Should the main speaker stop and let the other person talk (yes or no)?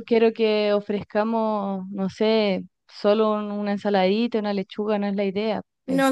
yes